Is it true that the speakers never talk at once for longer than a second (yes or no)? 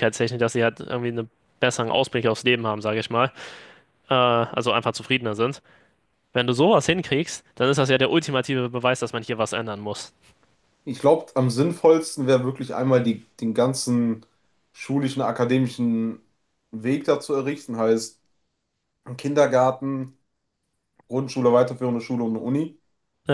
yes